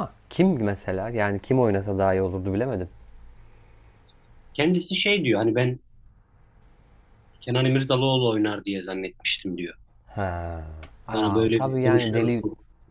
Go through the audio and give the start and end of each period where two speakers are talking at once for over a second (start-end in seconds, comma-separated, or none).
11.1-12.3